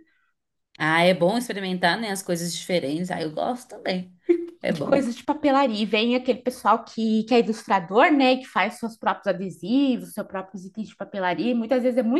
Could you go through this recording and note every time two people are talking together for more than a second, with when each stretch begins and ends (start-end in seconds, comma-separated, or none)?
none